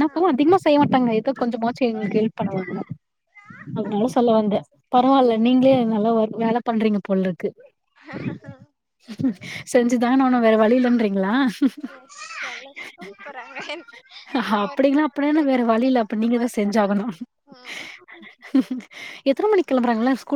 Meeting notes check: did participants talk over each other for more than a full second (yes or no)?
yes